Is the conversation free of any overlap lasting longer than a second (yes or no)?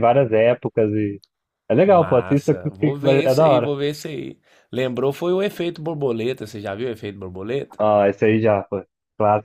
no